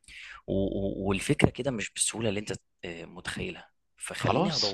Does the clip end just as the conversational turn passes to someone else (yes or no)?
no